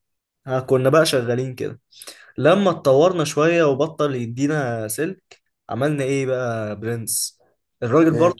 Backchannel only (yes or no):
yes